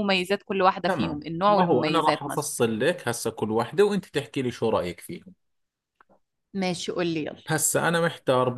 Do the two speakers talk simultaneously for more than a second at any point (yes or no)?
yes